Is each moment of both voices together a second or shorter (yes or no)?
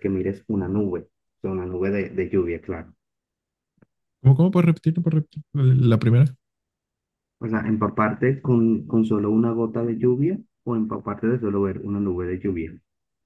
yes